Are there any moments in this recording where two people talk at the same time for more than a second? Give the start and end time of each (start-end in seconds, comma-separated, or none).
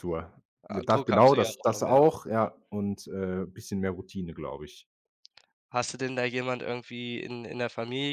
0.7-2.0